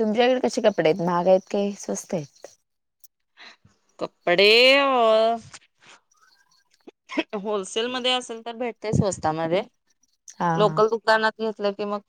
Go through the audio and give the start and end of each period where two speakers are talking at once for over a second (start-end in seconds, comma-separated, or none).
none